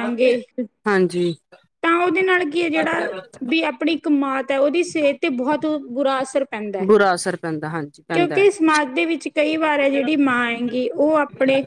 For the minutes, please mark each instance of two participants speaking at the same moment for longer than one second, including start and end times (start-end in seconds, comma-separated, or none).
none